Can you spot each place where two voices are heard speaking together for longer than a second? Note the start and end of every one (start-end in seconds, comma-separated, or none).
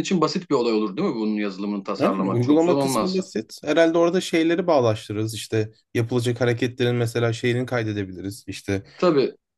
2.0-3.2